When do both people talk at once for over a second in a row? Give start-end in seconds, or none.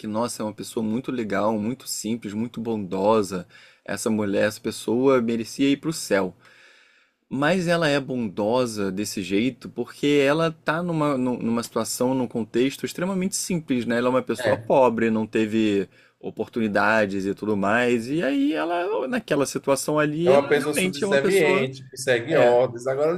20.2-21.7